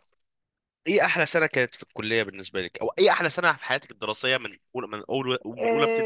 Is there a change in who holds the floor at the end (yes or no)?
yes